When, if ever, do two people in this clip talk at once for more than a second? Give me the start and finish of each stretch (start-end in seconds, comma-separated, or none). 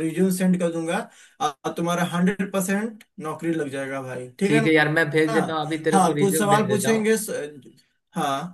5.9-7.1